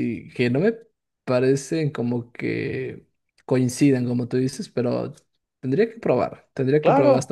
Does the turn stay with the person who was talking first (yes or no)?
no